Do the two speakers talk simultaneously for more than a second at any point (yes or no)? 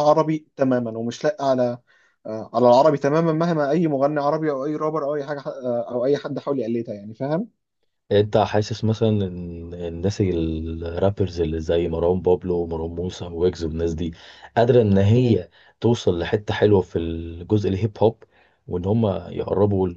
no